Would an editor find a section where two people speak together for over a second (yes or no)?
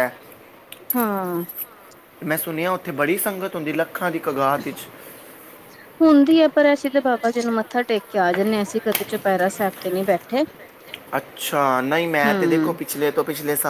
no